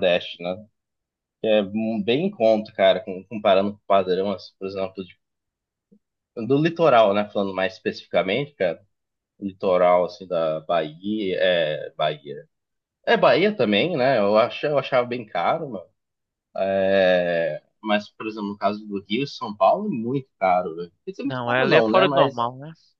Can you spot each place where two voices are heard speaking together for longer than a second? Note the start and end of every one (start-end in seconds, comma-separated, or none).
21.2-22.5